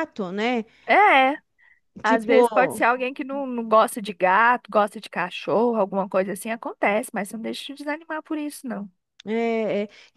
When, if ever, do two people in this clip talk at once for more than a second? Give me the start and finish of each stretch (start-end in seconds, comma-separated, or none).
none